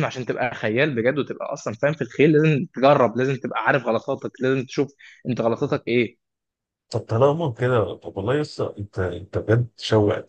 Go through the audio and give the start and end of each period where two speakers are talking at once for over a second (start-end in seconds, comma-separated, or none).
none